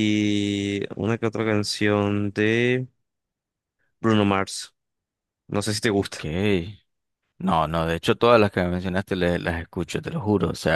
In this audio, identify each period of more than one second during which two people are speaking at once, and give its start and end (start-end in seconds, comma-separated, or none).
none